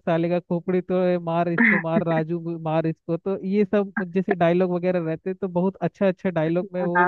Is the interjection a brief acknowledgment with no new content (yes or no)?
no